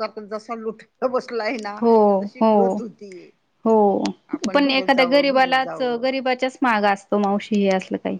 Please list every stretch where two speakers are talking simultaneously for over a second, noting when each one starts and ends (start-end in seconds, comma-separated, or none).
4.5-6.0